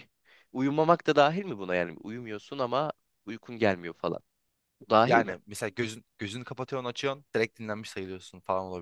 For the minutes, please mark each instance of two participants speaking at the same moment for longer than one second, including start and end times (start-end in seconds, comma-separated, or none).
none